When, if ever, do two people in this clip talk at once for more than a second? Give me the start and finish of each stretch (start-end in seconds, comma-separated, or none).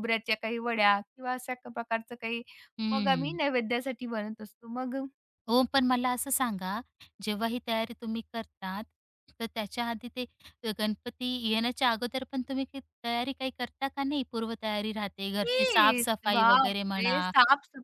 15.4-17.2